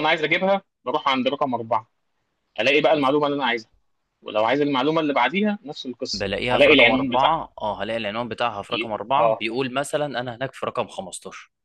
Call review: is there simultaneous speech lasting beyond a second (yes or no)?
yes